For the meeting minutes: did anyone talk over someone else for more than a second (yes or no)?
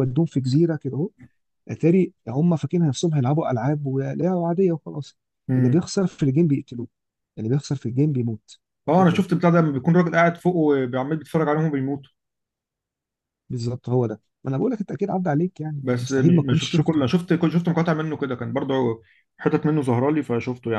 yes